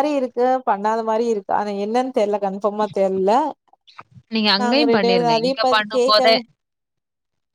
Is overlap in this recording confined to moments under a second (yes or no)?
no